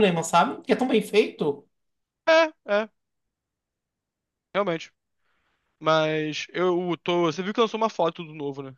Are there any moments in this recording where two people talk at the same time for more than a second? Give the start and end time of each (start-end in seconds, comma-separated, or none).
none